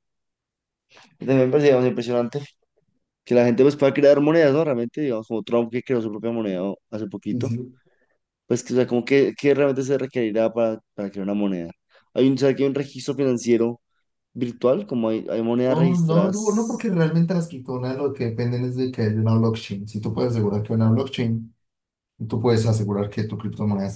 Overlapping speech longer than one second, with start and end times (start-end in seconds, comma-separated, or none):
15.7-16.9